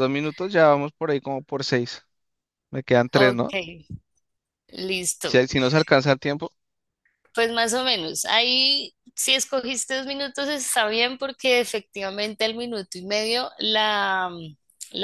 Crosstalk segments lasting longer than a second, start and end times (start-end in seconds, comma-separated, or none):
none